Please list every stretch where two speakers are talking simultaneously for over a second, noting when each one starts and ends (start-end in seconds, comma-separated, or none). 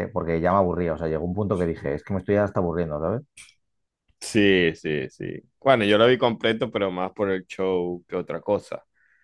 none